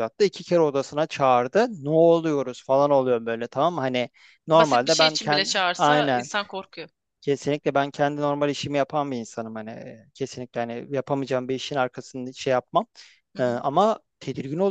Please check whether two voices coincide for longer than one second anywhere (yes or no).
yes